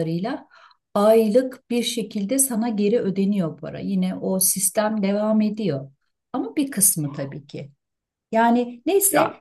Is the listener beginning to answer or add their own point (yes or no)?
no